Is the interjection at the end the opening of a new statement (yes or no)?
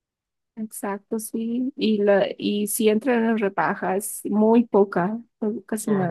yes